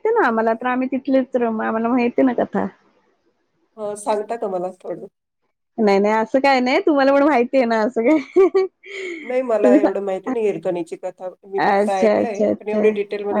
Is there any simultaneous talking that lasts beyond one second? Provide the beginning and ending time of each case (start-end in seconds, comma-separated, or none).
11.6-12.9